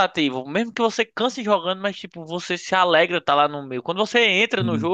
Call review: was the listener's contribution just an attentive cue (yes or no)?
yes